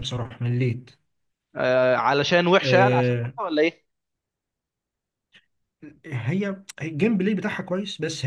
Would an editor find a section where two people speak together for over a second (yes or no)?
no